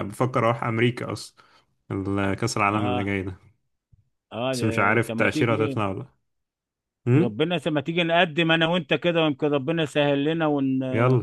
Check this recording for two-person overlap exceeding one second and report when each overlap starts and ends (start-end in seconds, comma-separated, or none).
4.5-5.8